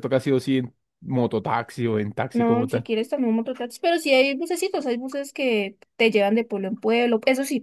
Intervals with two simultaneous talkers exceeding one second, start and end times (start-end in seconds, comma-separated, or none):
none